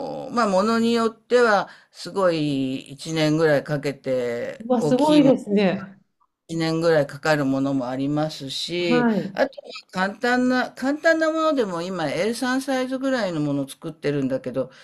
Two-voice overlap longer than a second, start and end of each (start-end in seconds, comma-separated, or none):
4.6-6.0